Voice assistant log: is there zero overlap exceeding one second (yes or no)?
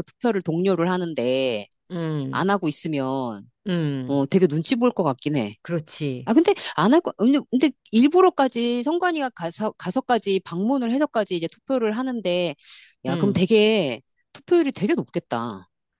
yes